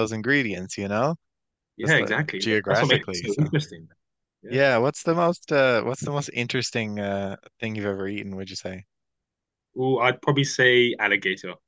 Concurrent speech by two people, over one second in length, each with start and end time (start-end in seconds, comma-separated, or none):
1.8-3.5